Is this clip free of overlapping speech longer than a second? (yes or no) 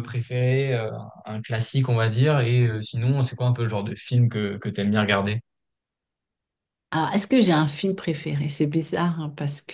yes